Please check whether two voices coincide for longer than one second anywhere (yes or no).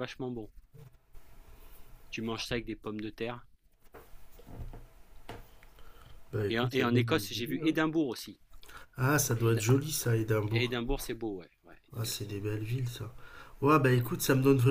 yes